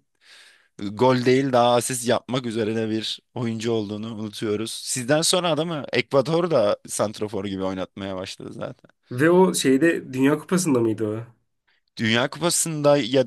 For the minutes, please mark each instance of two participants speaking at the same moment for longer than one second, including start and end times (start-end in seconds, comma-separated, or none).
none